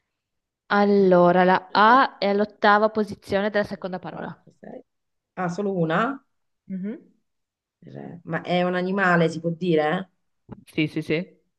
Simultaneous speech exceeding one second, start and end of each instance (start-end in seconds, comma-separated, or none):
none